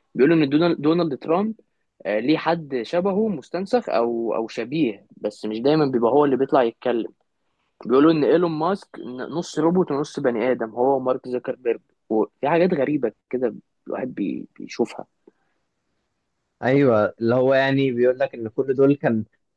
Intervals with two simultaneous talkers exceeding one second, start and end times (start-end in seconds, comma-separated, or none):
none